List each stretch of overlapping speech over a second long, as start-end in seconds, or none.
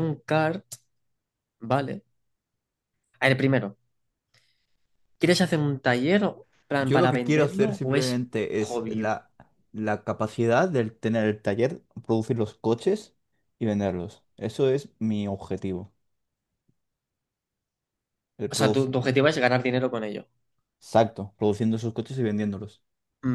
6.8-9.1